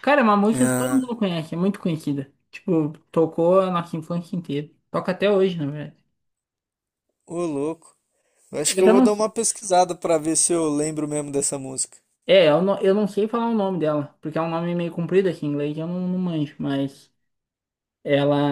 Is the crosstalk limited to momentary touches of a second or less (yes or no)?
yes